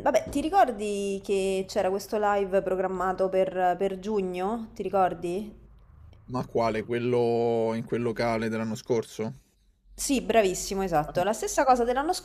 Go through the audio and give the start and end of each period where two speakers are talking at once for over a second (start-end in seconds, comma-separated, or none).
none